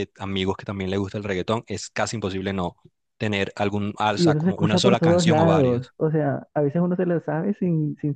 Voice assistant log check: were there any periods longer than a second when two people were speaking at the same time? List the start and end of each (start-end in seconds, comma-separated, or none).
4.2-5.8